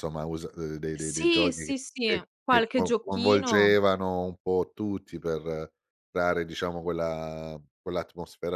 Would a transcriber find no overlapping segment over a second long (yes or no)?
no